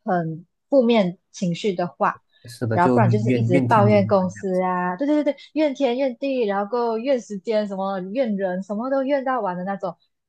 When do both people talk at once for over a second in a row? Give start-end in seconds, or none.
2.7-4.5